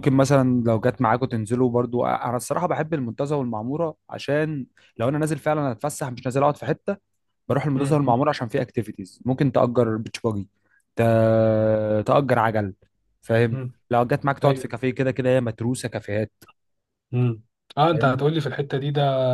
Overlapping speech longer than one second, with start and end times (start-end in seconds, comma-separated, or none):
none